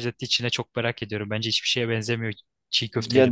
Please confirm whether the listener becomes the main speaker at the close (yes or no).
yes